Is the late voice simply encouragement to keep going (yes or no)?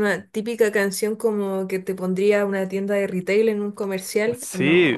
no